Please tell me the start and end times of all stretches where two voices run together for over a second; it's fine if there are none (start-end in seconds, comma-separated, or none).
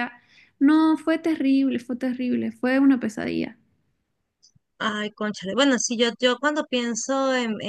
none